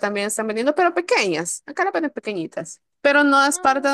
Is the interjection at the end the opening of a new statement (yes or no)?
no